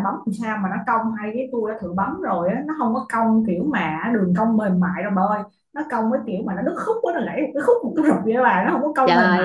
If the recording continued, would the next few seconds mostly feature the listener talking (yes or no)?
yes